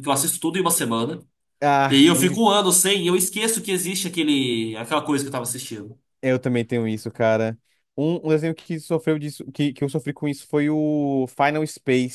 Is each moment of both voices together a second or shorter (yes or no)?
yes